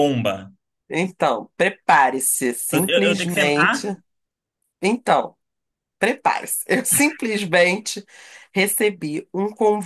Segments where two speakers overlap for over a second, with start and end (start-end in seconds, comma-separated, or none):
2.7-3.9